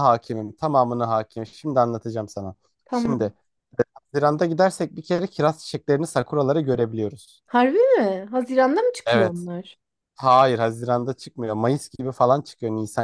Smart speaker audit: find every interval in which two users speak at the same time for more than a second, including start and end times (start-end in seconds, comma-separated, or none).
none